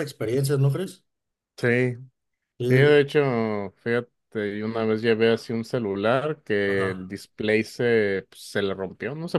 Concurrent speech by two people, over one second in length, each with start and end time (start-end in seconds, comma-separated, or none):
none